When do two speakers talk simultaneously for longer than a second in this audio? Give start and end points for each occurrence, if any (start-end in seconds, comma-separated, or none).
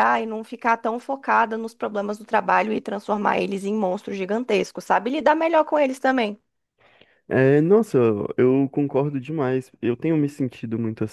none